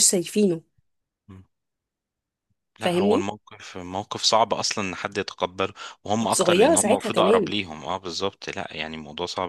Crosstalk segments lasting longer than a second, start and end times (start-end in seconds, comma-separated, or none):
6.2-7.5